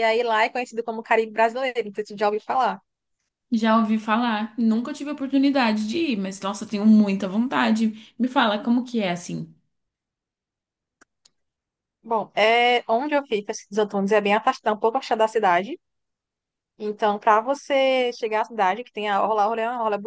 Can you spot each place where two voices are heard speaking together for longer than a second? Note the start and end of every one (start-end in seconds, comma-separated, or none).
none